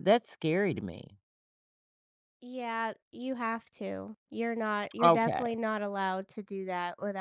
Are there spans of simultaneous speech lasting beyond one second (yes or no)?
no